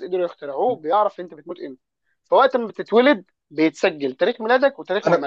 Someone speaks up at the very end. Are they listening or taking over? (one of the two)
taking over